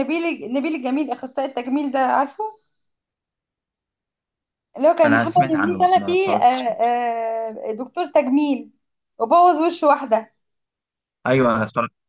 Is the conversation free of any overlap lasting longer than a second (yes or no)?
no